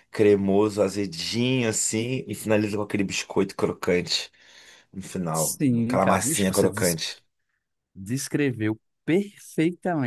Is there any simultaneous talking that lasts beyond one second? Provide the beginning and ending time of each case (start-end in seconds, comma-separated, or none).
5.3-7.0